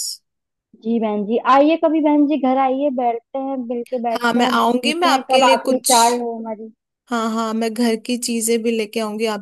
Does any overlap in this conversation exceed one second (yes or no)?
yes